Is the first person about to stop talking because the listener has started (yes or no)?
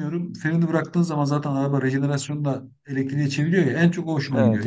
no